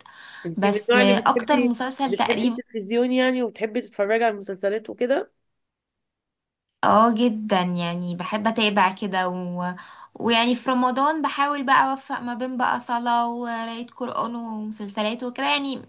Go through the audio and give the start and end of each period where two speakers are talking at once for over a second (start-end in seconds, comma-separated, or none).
0.6-2.6